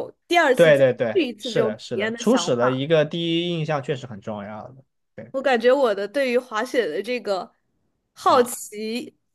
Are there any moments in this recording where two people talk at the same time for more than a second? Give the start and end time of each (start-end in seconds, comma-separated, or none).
0.5-2.8